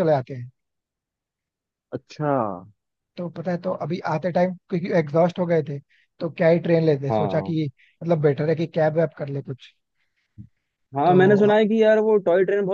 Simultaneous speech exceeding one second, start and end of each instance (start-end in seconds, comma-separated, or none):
none